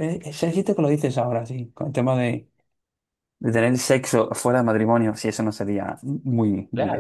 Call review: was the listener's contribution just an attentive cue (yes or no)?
no